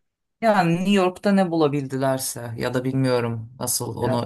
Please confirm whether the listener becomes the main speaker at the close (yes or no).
no